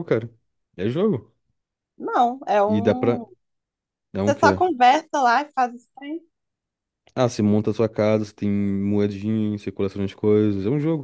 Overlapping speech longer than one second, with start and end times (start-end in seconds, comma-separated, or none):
none